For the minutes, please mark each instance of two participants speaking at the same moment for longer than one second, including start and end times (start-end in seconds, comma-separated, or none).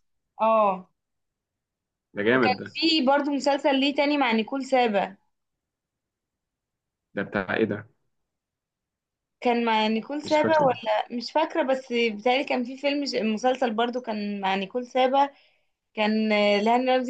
none